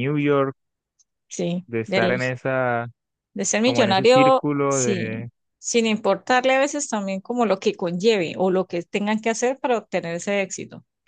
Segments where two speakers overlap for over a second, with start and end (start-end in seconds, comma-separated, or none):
3.6-5.3